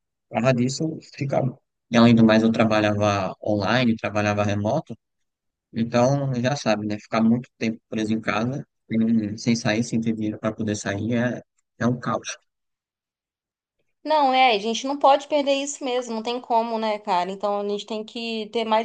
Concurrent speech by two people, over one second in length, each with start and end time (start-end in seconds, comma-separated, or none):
none